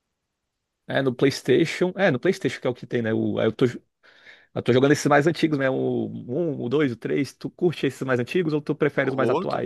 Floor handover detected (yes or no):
yes